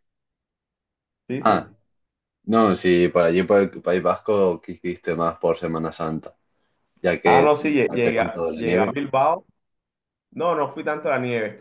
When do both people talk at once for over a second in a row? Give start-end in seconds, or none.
7.2-9.0